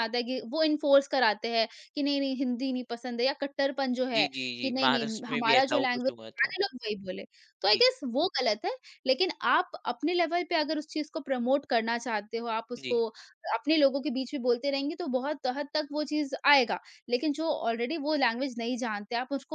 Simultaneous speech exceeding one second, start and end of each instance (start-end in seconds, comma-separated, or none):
4.1-6.5